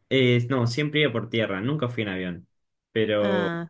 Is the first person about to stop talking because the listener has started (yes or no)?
no